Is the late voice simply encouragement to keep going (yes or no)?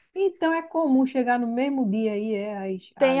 no